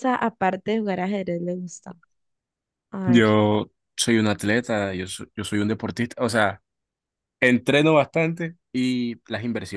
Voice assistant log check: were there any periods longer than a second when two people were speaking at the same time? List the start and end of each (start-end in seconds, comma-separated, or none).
none